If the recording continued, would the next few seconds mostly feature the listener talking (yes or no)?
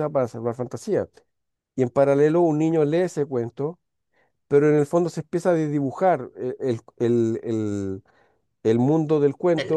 no